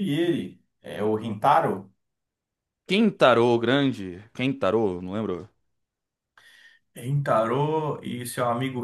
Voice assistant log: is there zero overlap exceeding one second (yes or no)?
yes